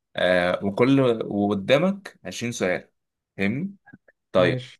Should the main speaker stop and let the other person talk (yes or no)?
no